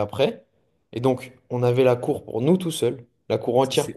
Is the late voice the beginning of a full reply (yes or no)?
no